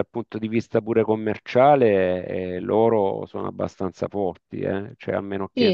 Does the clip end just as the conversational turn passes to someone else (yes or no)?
yes